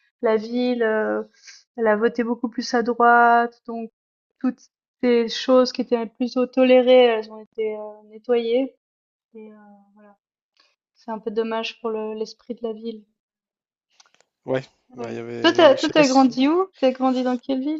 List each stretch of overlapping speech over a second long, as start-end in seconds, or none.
14.9-16.3